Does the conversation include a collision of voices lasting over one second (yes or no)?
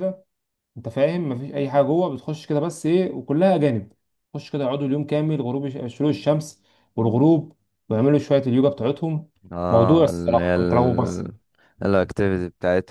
yes